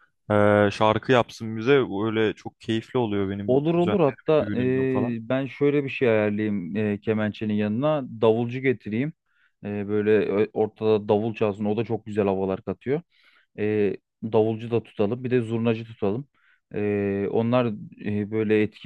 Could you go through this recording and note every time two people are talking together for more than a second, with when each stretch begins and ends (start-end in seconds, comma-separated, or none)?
3.5-5.2